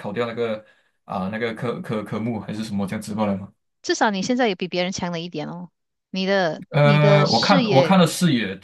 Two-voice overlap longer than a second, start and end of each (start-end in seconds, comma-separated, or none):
6.7-7.9